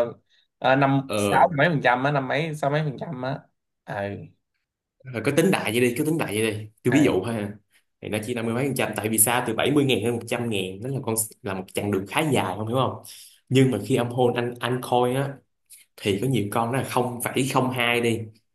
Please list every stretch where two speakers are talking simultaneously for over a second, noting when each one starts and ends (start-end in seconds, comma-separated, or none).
none